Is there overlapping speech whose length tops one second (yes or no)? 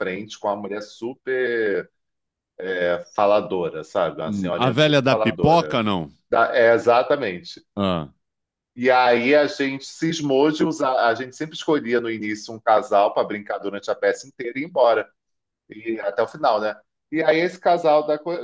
yes